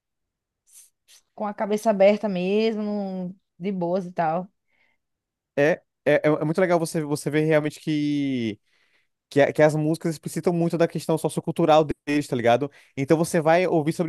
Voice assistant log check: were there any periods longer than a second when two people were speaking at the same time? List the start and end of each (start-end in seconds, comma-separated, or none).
none